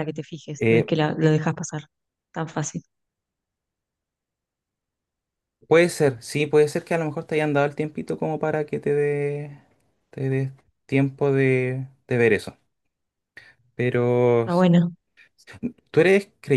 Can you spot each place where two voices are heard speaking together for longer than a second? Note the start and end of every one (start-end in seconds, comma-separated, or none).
none